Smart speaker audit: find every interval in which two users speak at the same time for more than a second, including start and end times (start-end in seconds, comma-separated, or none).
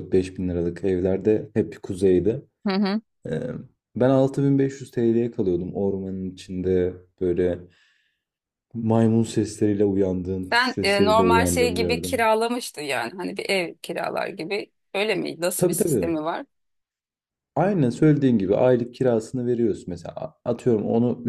10.5-12.1